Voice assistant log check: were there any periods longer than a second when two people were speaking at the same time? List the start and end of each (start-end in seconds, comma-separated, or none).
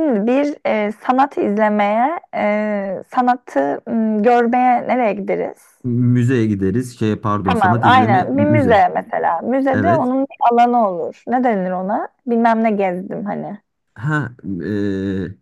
7.4-8.8